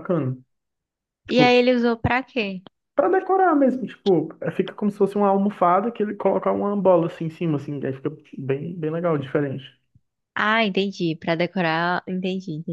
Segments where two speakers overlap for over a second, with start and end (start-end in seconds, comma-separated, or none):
none